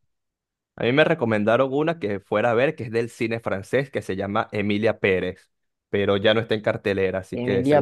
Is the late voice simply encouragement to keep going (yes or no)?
no